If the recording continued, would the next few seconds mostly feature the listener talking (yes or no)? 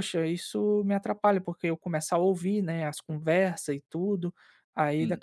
no